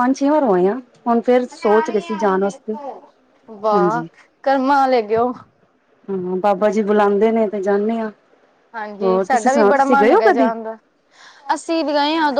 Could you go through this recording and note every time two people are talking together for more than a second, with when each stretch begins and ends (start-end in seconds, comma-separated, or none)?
9.0-10.5